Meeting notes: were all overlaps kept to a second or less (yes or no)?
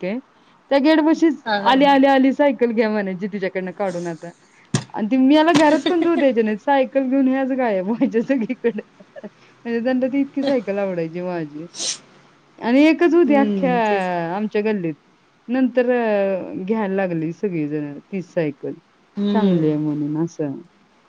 yes